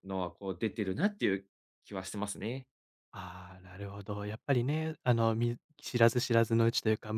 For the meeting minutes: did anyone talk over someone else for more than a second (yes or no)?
no